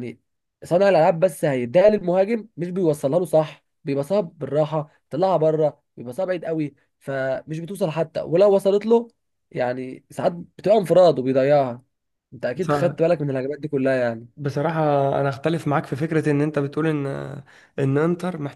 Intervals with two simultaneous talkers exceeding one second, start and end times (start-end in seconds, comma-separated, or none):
none